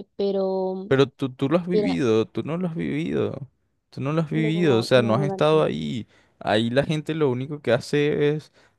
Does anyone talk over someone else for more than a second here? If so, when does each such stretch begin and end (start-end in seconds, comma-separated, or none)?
4.3-5.7